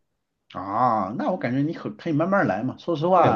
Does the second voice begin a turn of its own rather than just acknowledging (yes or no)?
yes